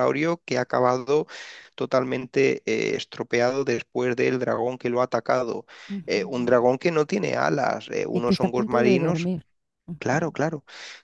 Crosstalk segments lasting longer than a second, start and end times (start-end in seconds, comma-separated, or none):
8.1-9.3